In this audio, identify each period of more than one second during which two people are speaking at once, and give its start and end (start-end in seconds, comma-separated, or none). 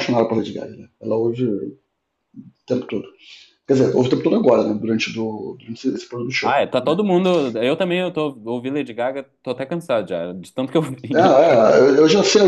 none